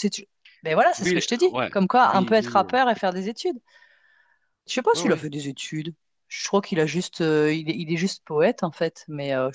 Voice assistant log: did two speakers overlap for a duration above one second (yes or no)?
yes